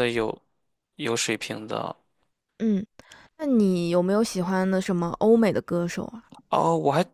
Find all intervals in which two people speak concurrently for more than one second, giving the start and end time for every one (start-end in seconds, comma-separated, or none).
none